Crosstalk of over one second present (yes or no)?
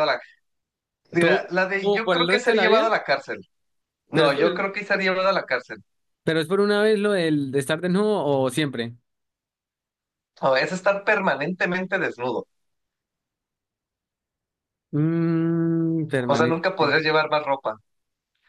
yes